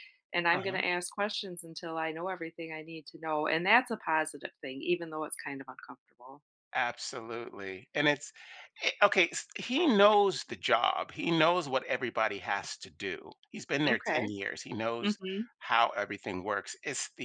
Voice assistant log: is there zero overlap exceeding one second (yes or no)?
yes